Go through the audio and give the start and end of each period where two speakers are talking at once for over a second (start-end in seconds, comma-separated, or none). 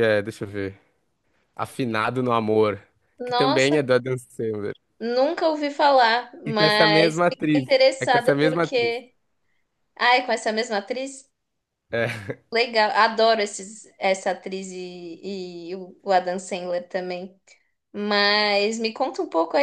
6.5-8.9